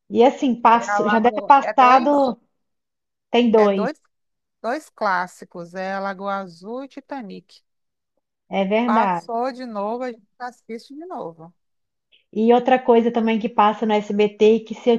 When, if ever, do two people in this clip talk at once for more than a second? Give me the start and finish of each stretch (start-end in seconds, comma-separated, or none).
0.7-2.3